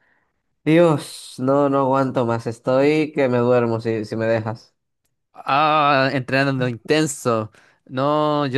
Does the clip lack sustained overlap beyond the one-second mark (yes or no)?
yes